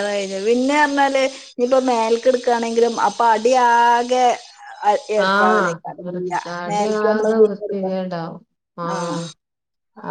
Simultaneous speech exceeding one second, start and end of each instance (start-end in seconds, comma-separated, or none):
5.3-7.9